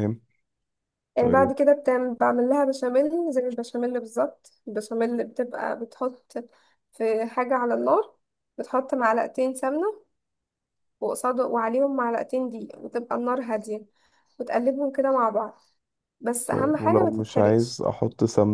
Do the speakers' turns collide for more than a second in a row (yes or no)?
yes